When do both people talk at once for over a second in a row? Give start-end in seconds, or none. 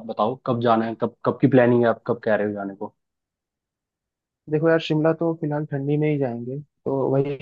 none